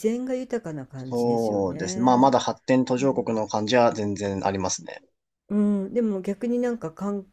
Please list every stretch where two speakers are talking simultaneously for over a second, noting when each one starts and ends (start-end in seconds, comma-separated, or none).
0.9-2.4